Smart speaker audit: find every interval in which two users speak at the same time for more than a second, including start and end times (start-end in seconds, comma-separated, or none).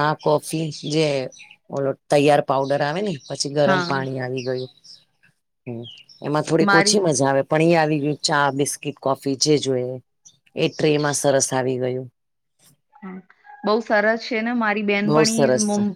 none